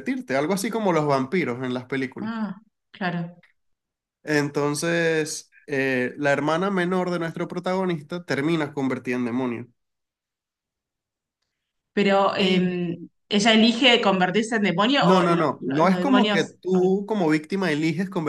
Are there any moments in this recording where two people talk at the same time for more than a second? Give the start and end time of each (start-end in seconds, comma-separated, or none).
15.0-16.9